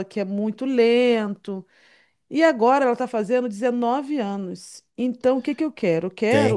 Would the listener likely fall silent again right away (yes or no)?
no